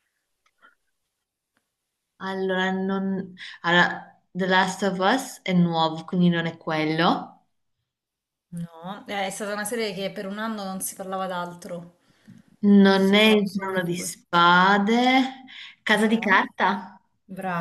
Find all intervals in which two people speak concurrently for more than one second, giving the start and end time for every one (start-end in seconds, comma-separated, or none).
12.9-14.1